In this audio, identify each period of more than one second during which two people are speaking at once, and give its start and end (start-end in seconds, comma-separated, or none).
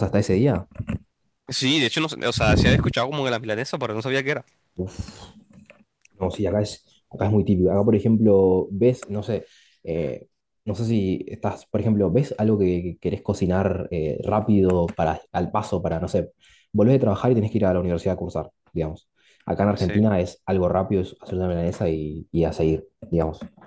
none